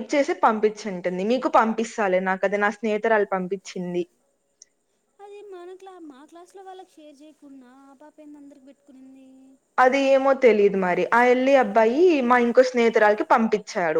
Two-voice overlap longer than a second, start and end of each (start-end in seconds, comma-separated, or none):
none